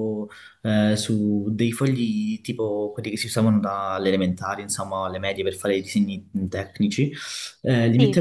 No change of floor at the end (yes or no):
yes